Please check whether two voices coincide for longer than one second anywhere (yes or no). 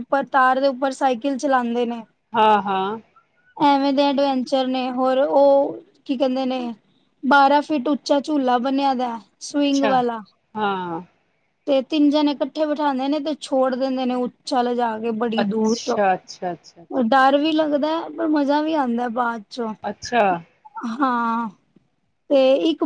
yes